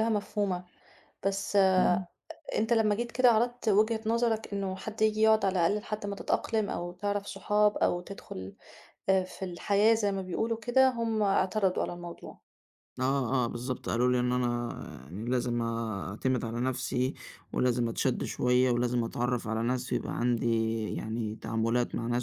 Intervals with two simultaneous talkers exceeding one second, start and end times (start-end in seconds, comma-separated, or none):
none